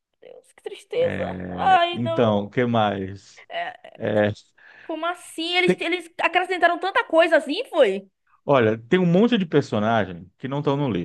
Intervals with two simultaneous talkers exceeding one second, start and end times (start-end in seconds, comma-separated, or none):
1.0-2.5